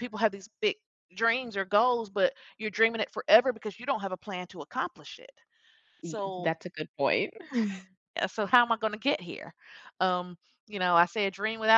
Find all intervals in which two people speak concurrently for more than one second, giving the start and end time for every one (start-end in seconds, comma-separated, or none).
none